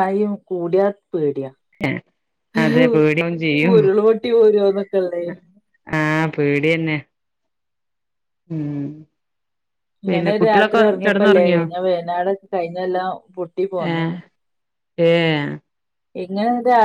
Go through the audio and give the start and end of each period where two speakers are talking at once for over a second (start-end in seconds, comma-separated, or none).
10.1-11.6